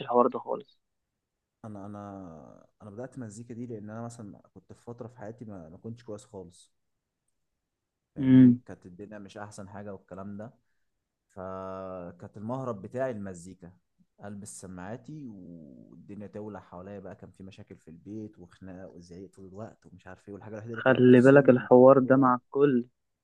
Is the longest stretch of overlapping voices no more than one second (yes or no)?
no